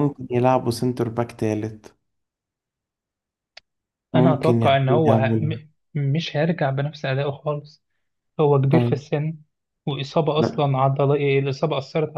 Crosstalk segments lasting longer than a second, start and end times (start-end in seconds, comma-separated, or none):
4.2-5.5